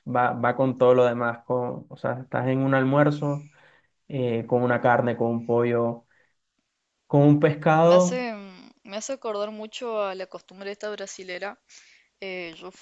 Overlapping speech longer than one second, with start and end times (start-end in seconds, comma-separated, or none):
none